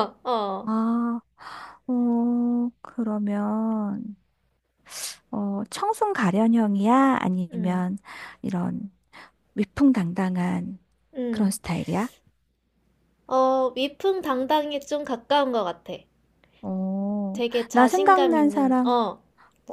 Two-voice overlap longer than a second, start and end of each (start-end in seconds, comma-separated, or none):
17.3-18.9